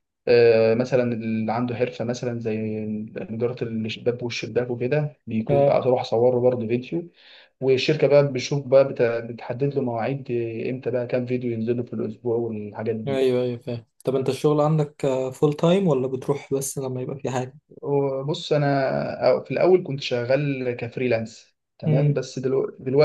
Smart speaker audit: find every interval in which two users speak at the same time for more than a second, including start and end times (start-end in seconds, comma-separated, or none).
none